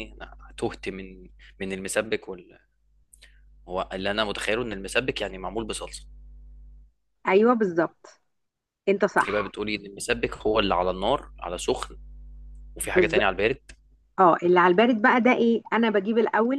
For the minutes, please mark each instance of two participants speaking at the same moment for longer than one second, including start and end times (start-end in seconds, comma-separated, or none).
none